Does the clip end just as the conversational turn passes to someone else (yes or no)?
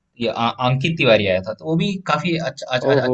yes